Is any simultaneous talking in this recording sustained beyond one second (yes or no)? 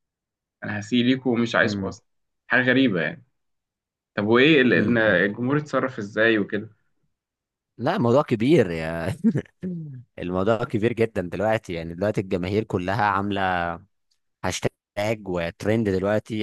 no